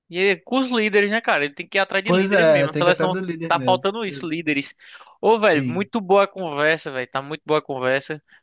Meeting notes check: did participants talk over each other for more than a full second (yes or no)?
yes